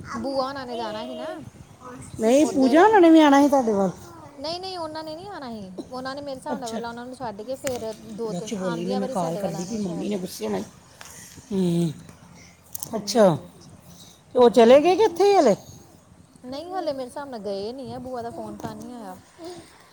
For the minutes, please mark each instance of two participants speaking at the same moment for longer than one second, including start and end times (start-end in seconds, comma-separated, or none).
8.3-10.1